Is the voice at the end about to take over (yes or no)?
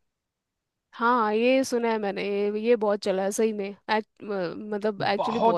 yes